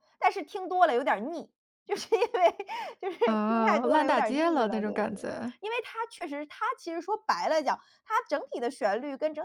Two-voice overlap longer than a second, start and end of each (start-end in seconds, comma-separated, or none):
3.2-5.5